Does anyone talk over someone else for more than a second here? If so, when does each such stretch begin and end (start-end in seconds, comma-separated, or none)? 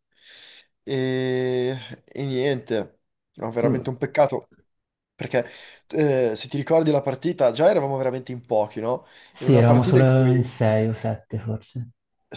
9.3-10.6